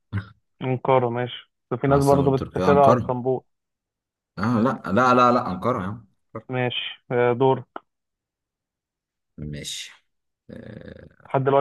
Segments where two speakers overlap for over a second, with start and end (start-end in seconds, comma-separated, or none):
1.9-3.2